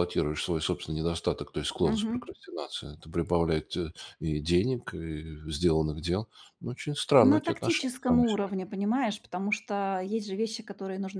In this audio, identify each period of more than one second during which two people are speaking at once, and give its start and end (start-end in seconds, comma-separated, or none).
7.2-8.5